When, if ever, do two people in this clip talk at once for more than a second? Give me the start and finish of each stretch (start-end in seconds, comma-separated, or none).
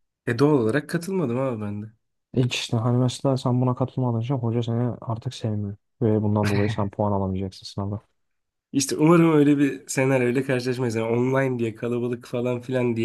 none